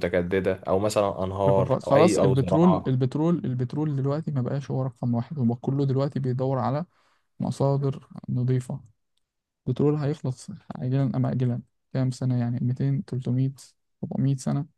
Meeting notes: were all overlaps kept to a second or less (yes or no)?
no